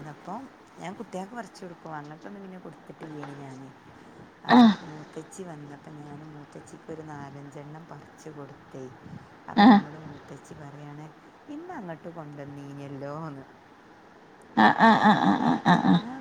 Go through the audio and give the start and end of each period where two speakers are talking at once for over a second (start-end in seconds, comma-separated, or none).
none